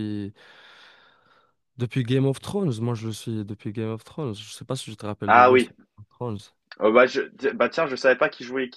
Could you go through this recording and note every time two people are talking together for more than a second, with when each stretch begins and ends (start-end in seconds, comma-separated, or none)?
none